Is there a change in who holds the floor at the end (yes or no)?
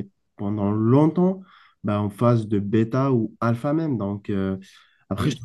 no